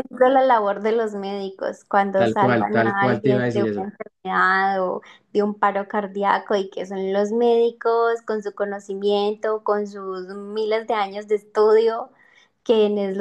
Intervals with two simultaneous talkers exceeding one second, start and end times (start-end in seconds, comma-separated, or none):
2.1-3.9